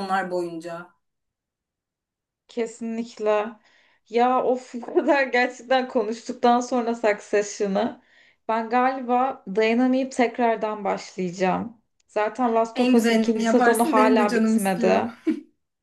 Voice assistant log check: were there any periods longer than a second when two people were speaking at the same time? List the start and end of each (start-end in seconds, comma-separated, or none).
12.7-15.0